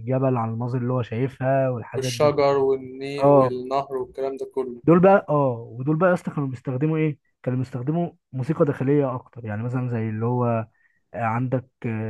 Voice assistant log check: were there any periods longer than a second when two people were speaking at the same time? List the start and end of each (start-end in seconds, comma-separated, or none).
none